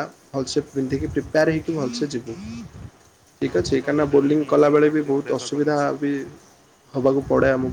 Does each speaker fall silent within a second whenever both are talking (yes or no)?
no